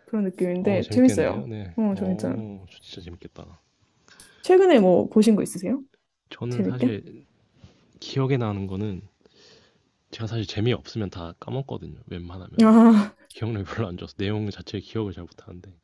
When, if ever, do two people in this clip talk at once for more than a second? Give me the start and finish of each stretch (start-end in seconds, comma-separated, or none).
0.6-2.4